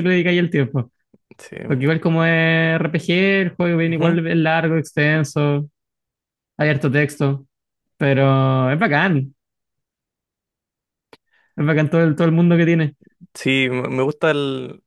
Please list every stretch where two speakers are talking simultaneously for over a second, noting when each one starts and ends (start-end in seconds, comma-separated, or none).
none